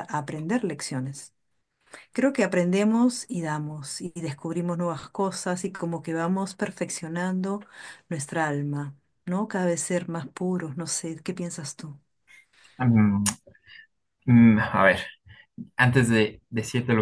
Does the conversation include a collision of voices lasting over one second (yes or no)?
no